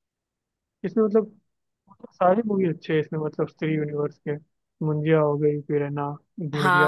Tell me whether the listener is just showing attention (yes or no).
no